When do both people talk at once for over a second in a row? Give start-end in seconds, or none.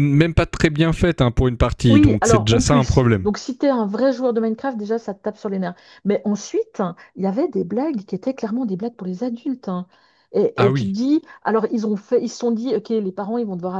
1.9-3.3